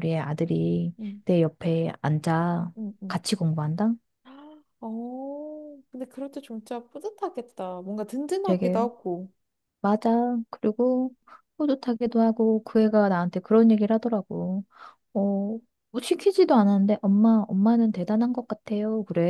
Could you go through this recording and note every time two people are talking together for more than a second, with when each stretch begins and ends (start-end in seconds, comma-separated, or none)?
none